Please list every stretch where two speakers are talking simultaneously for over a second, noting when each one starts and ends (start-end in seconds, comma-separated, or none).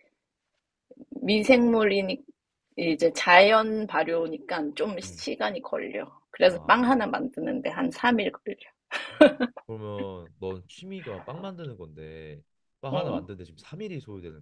none